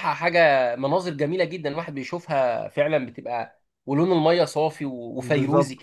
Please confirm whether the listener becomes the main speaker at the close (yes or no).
yes